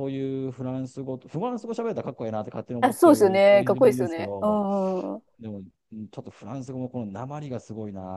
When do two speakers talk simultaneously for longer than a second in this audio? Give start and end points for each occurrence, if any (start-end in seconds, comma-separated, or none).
2.8-4.6